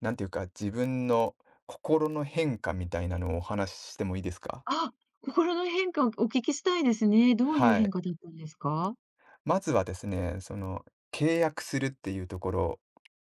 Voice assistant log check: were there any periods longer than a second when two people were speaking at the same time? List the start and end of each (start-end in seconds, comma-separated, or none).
none